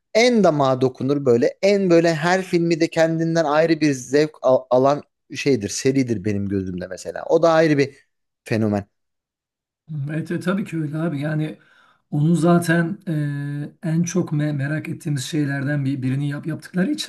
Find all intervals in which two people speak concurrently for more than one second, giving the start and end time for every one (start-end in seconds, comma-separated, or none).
none